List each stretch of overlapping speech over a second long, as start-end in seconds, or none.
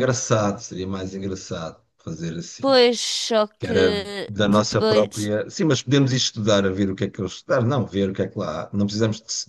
3.6-5.3